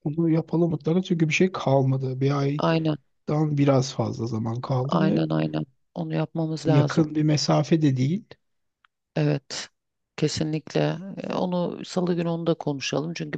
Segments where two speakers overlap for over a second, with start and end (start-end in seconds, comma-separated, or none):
none